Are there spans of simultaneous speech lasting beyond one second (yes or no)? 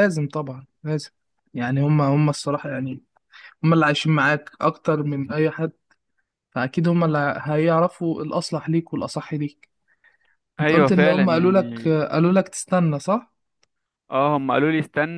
yes